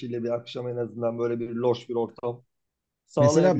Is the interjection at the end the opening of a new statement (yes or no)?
yes